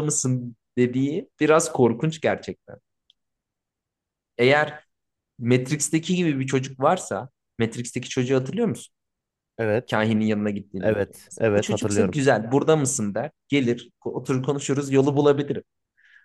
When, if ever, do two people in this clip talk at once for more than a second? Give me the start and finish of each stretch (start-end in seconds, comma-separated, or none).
10.8-12.2